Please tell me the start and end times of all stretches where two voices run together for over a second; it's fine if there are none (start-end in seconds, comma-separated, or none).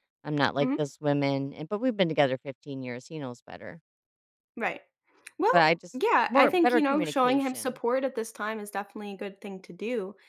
5.5-7.8